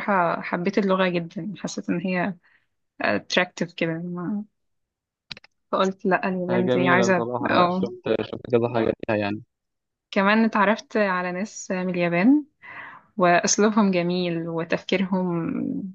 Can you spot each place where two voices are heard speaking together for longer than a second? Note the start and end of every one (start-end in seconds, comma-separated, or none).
6.5-7.8